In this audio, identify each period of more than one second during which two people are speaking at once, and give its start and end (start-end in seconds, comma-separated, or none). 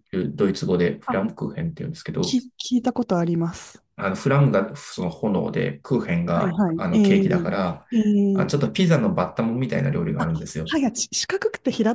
6.3-7.5